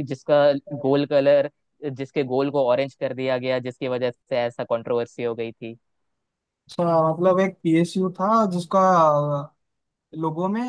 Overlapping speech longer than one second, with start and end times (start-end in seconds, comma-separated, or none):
none